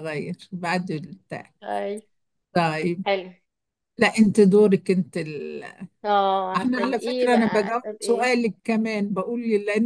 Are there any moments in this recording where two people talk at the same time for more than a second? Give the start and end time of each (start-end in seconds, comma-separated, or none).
6.5-8.3